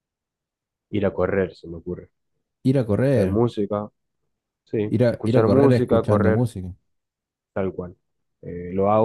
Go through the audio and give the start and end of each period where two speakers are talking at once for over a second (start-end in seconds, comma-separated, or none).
5.0-6.5